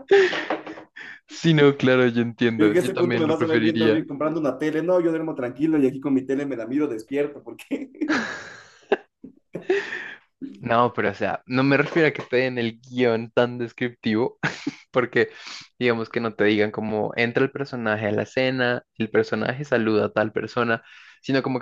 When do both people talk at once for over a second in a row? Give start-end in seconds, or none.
2.6-4.0